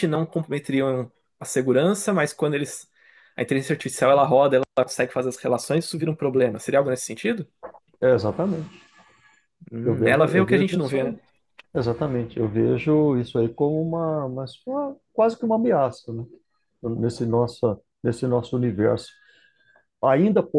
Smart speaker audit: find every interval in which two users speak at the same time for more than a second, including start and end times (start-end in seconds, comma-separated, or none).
9.8-11.2